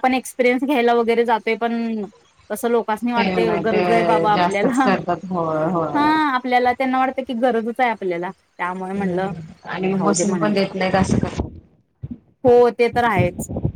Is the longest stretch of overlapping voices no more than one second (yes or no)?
no